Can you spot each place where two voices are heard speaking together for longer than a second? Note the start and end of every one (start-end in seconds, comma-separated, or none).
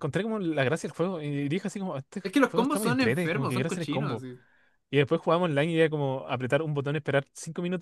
2.2-4.2